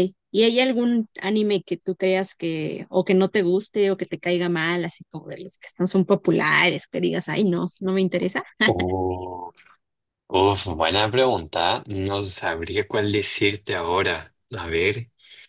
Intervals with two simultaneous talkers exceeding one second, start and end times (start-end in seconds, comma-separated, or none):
none